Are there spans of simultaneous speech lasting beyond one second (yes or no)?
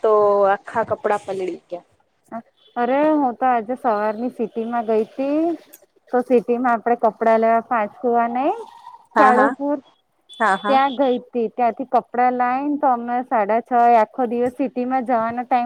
no